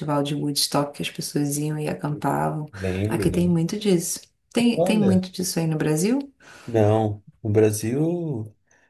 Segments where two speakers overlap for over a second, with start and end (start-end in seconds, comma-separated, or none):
none